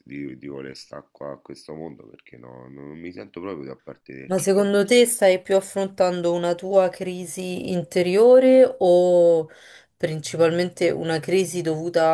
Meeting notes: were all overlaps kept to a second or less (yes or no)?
yes